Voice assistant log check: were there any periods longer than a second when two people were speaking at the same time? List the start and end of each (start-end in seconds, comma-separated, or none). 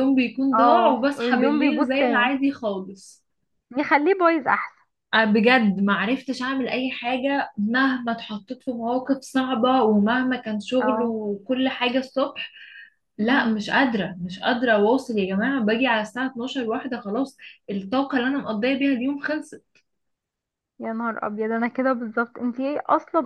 0.5-1.9